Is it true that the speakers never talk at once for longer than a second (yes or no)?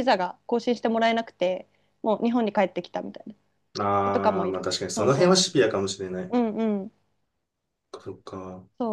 no